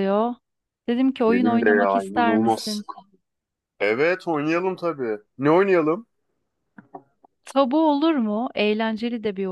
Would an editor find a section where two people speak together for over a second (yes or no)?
yes